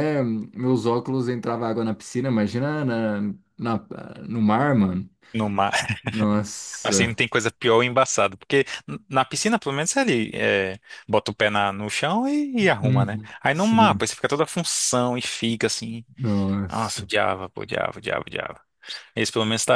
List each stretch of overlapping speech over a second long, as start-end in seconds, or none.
12.6-14.0